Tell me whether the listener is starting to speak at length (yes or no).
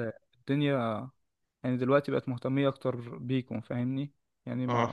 no